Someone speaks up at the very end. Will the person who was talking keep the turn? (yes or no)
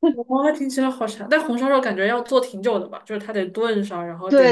no